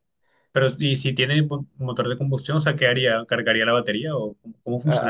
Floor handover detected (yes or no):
yes